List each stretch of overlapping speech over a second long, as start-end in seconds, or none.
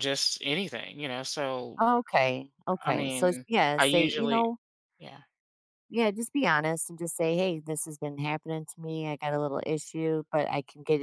2.8-4.4